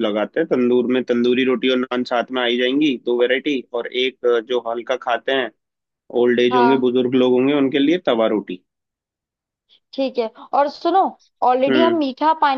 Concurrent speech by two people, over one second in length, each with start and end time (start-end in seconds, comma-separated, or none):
none